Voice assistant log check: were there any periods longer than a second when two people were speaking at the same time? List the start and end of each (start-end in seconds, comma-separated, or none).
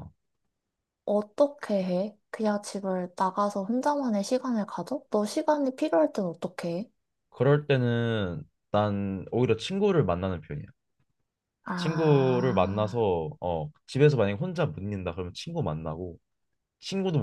11.8-13.1